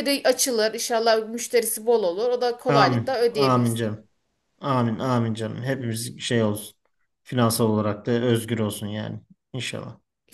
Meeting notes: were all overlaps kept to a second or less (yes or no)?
no